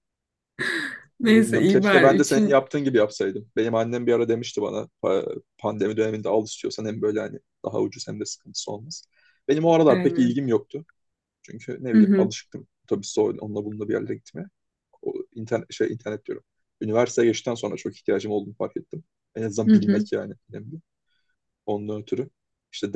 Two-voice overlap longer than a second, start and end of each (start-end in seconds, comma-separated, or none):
1.2-2.6